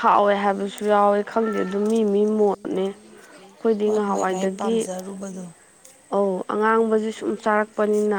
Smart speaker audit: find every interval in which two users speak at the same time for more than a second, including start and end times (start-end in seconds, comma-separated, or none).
none